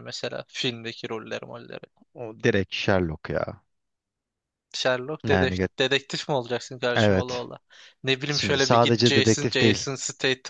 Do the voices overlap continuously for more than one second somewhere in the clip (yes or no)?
yes